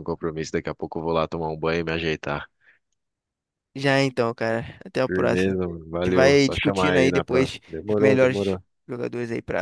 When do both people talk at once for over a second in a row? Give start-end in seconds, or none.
5.1-8.6